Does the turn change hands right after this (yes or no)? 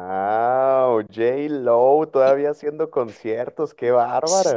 yes